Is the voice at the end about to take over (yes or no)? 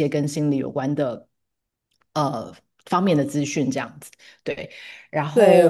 yes